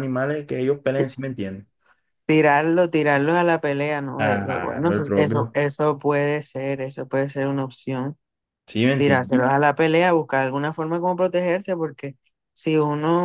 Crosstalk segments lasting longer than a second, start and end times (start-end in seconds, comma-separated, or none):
4.2-5.6